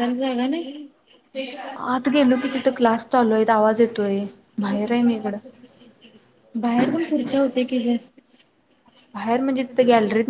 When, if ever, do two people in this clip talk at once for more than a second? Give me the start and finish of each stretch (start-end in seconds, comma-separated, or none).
none